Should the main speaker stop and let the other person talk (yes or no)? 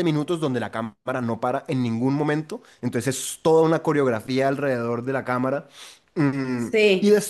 no